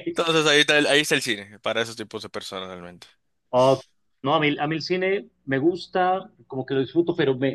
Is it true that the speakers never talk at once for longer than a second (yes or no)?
yes